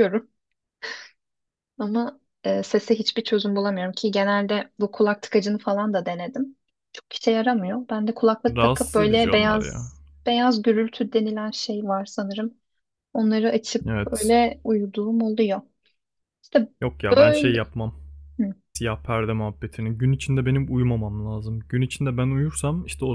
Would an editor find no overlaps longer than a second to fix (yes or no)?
no